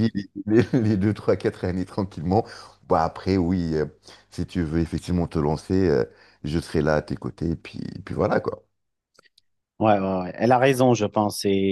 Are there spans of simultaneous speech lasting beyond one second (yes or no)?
no